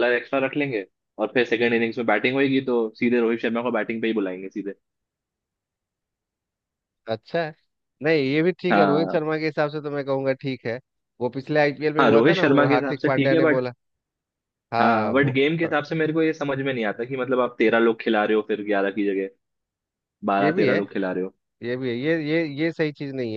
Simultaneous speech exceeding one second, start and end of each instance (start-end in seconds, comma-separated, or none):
12.0-13.7